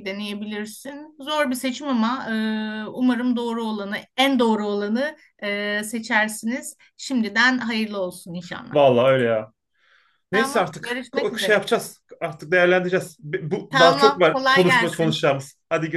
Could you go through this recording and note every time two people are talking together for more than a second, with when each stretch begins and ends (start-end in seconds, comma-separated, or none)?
10.3-11.6, 13.7-15.2